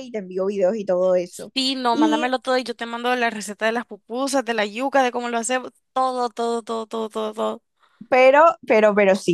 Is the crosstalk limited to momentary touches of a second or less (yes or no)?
yes